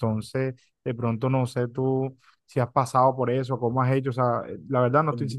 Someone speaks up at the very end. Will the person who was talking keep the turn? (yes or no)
yes